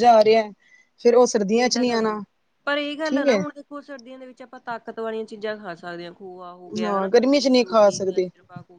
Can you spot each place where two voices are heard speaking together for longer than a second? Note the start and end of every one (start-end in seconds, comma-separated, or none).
6.8-8.3